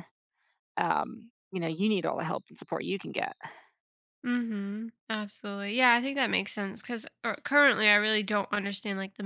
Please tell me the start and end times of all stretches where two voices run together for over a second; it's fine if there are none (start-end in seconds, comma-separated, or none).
none